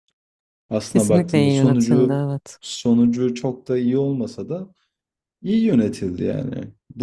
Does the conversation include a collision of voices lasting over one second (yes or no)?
yes